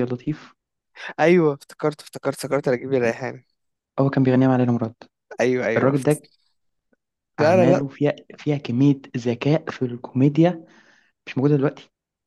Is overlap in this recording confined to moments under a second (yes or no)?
yes